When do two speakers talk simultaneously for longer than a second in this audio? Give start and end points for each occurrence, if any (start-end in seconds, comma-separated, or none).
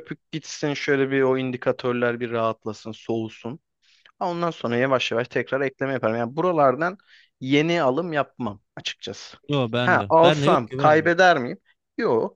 9.8-11.2